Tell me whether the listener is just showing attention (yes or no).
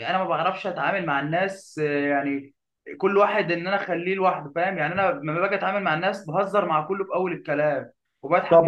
no